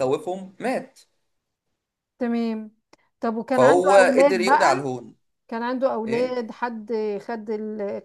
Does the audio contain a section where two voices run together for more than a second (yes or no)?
yes